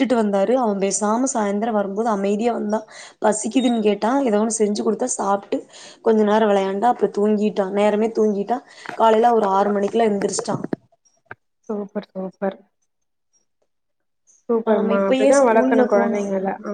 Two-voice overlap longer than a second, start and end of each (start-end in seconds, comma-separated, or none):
14.7-16.2